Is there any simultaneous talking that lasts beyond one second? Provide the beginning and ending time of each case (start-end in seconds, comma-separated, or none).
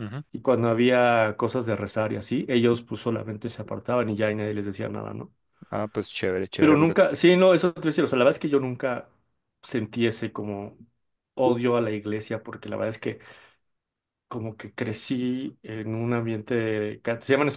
none